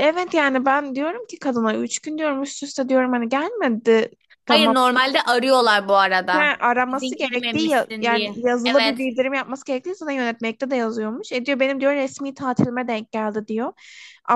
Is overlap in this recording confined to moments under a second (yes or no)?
no